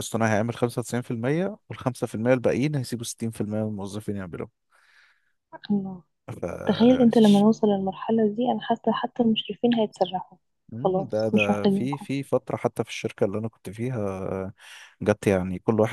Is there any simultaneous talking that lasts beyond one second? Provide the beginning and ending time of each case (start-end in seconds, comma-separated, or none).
10.8-12.1